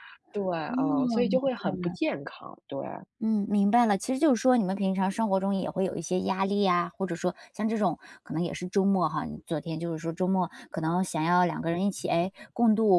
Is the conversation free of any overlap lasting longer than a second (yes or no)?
no